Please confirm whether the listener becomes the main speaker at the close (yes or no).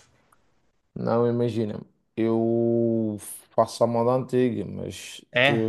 no